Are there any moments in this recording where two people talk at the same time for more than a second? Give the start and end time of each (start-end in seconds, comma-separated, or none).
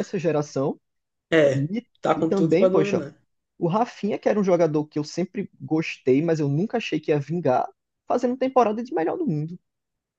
1.5-3.1